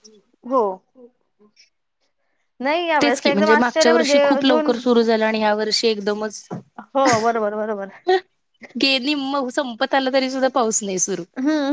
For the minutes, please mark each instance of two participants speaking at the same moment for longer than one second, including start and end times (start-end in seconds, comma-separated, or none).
3.0-4.7